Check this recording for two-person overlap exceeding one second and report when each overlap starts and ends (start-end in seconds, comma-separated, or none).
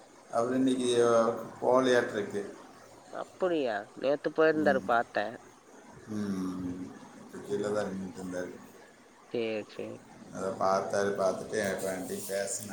none